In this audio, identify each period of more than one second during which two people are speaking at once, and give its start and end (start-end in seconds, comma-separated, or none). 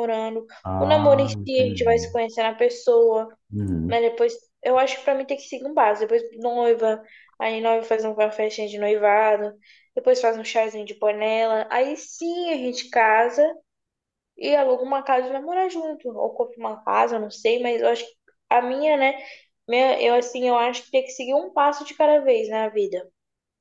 0.6-2.1